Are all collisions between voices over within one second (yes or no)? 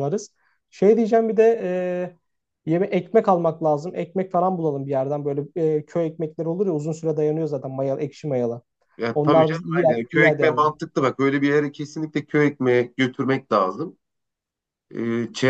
no